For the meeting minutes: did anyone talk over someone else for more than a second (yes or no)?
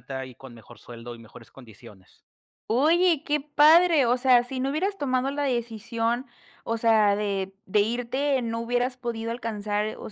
no